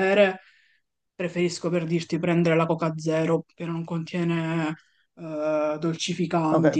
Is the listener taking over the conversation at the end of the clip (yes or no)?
yes